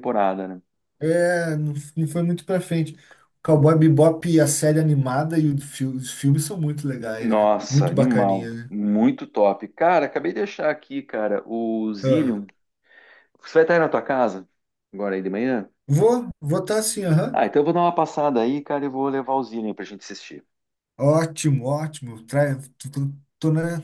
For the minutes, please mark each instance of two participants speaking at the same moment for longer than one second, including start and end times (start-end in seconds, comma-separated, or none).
7.2-8.7